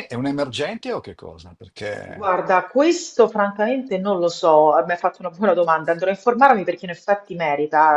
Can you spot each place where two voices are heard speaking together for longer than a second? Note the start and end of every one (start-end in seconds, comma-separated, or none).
none